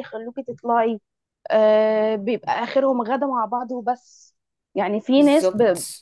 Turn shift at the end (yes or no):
no